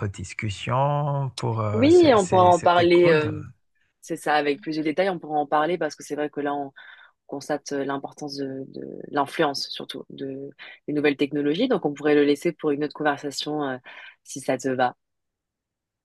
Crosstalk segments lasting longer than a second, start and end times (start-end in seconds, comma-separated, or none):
1.7-3.3